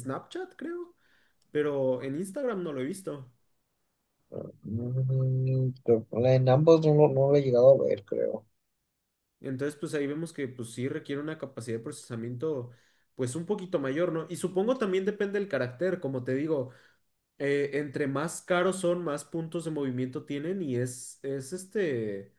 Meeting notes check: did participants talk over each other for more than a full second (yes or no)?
no